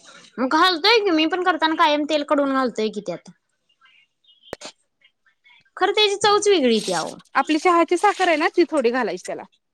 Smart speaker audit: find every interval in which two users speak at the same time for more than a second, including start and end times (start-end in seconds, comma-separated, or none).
none